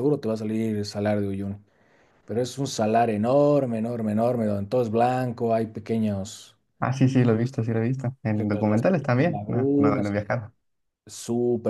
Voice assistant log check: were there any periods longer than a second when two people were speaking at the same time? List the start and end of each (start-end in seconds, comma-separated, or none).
8.3-10.2